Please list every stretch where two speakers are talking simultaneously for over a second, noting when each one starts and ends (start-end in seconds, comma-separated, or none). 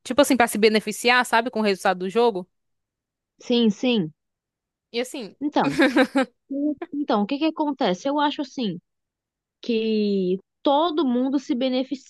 none